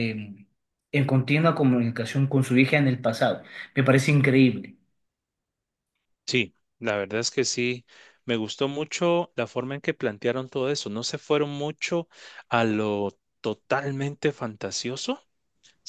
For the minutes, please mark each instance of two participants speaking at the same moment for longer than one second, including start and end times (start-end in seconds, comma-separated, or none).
none